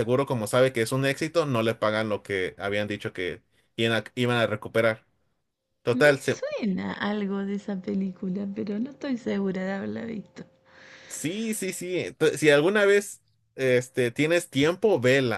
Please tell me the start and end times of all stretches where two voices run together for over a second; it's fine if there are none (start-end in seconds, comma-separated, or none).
none